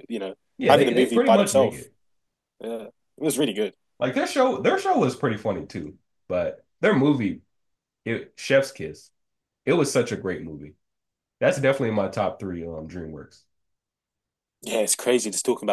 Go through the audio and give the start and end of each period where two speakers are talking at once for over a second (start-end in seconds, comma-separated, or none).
0.6-1.9